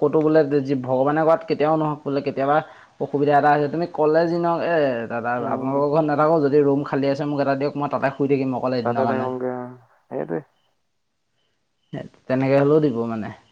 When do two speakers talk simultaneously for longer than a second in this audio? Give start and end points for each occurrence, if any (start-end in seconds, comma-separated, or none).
none